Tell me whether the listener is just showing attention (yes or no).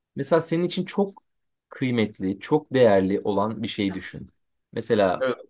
yes